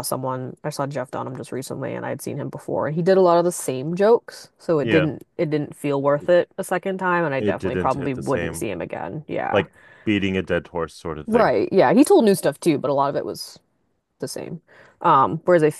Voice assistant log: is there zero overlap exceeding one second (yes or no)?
no